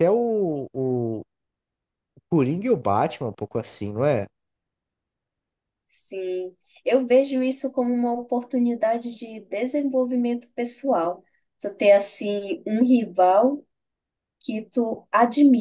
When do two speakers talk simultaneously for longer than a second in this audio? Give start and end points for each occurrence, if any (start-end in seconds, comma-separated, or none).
none